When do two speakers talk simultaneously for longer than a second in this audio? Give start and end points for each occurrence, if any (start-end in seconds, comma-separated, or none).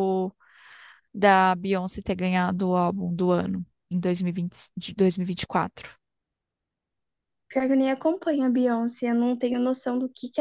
none